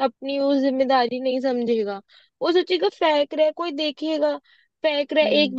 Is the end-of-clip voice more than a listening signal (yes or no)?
no